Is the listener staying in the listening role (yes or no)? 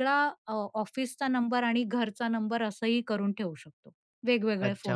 no